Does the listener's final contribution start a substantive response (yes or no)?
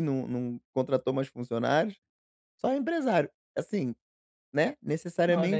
yes